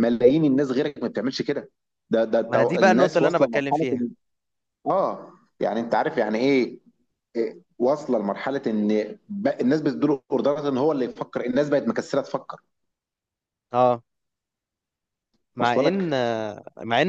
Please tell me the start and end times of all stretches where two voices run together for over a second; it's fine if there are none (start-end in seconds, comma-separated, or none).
2.5-4.1